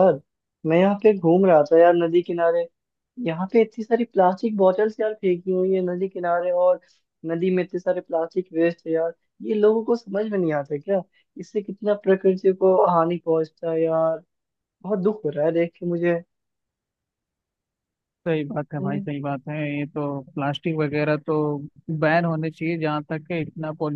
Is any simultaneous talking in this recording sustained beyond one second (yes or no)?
no